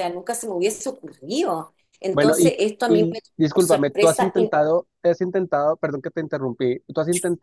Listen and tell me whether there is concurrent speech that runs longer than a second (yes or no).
yes